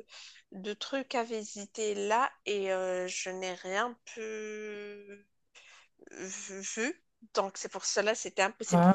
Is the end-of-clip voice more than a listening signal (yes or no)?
no